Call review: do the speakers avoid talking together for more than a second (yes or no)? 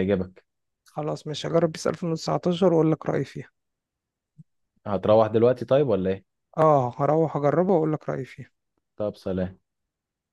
yes